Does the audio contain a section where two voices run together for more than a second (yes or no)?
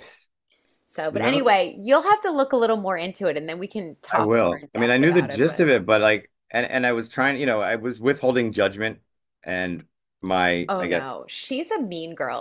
yes